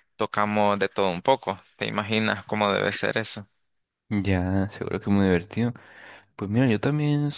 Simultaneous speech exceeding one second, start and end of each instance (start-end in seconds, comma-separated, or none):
none